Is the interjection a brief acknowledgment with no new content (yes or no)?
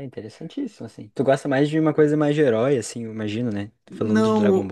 no